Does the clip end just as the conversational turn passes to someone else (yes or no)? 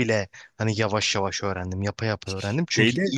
no